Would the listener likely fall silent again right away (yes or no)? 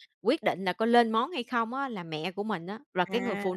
yes